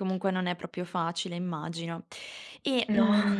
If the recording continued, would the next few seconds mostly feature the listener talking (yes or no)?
no